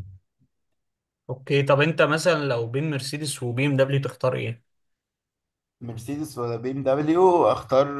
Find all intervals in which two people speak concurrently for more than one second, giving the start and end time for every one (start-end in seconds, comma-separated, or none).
none